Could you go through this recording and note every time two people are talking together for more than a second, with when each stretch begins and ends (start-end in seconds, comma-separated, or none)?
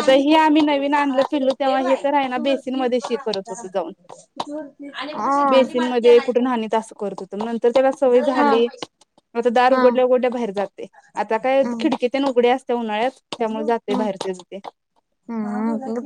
none